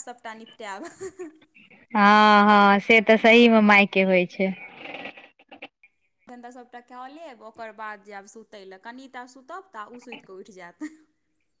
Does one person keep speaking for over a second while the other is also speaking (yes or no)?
no